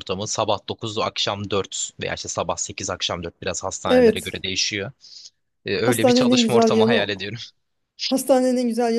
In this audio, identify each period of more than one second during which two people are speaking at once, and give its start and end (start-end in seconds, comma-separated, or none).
5.8-7.1